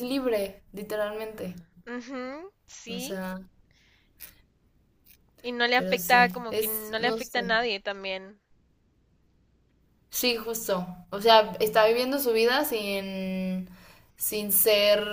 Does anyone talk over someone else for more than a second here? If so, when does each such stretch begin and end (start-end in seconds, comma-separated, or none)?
5.7-7.5